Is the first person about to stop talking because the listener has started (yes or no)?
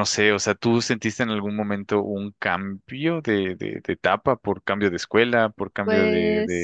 no